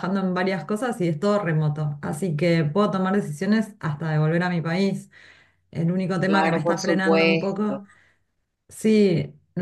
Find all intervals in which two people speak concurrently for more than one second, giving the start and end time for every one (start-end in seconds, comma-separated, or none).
6.2-7.8